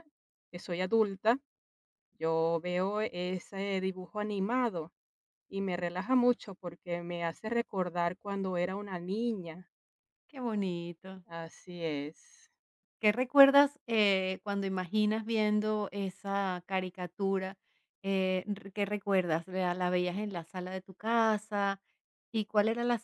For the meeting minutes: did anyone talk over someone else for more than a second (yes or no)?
no